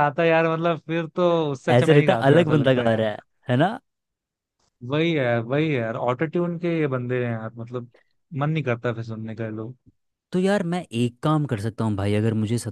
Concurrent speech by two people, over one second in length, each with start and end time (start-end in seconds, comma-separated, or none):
1.7-3.1